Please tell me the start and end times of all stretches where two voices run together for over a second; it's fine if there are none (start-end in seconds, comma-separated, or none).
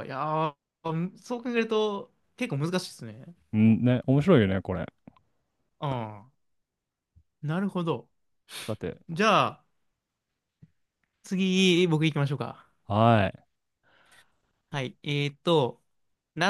none